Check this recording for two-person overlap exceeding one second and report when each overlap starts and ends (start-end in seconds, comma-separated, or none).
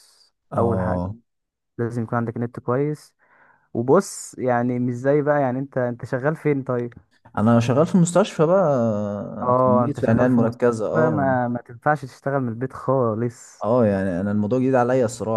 9.4-11.3